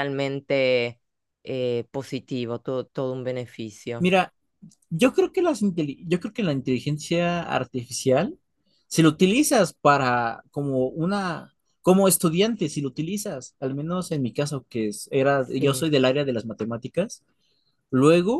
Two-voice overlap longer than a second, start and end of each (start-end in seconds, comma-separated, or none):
none